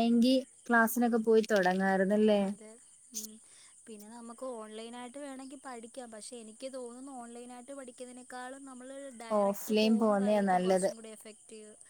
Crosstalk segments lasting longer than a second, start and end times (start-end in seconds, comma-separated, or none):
9.4-10.9